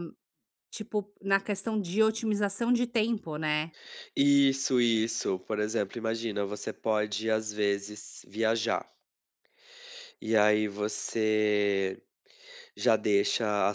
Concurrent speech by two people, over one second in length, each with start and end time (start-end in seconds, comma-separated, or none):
none